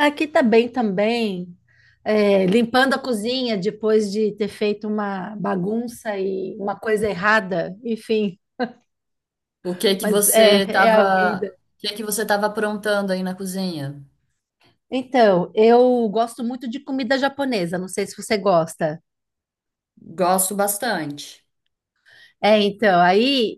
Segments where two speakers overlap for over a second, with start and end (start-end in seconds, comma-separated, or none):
10.0-11.5